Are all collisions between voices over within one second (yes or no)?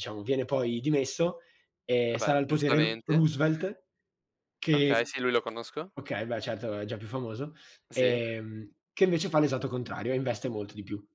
no